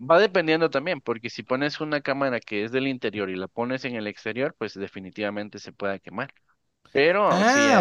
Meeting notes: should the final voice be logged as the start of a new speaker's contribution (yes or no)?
yes